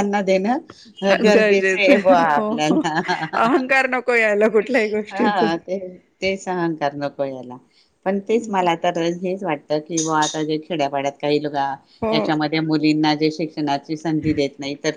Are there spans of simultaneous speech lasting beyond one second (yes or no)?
no